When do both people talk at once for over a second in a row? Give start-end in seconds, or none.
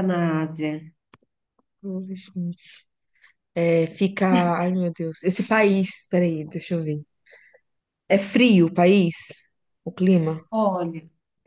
none